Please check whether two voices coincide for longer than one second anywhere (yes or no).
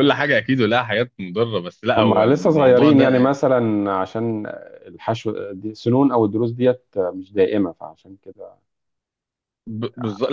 yes